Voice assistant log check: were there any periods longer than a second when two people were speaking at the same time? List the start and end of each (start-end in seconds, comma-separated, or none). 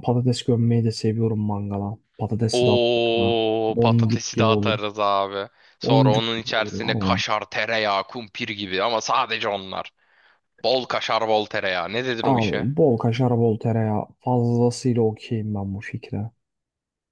2.5-4.9, 5.8-7.2